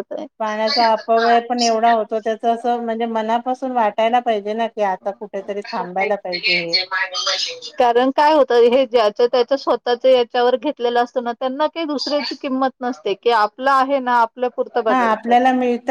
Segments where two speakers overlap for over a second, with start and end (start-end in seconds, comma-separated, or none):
none